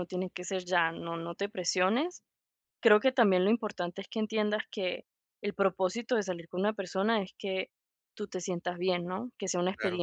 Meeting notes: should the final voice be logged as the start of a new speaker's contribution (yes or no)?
no